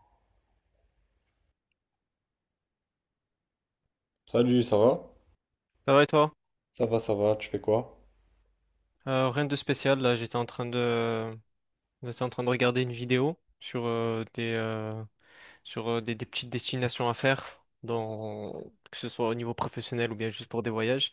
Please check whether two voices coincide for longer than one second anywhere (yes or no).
no